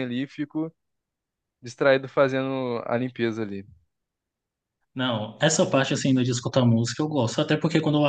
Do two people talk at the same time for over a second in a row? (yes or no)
no